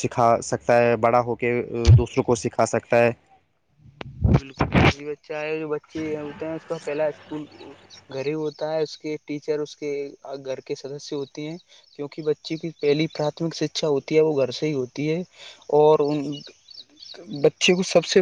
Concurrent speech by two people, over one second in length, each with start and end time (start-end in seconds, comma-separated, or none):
none